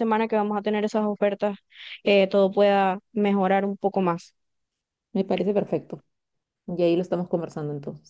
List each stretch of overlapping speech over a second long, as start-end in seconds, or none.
none